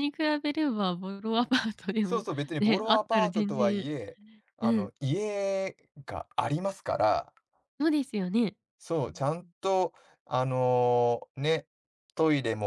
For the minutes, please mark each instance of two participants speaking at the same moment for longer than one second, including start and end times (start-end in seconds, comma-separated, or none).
2.0-3.8